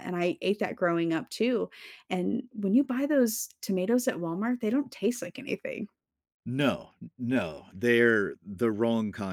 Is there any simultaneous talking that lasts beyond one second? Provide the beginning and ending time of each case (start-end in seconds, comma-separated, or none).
none